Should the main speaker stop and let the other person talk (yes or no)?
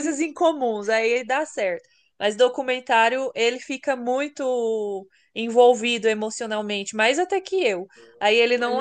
no